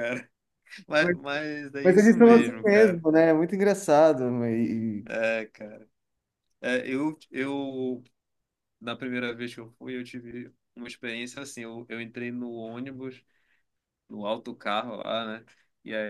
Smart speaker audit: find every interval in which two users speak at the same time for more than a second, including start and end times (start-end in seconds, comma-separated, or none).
1.8-3.0